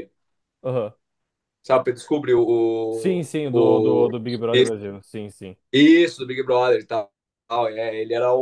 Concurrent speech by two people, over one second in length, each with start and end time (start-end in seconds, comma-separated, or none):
2.9-4.1